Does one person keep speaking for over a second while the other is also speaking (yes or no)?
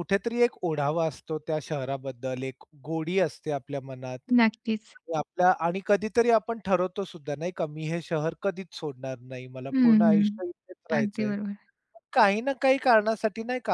yes